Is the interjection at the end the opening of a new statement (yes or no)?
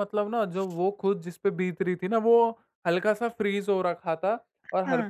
no